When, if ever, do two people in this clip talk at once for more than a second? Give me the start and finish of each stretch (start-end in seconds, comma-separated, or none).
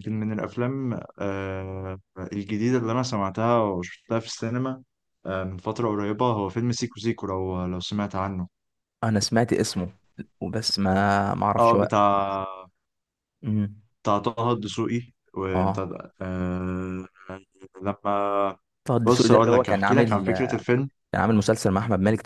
19.0-20.2